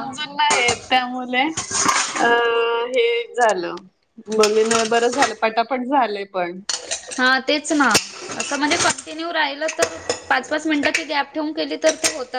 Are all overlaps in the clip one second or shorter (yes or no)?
yes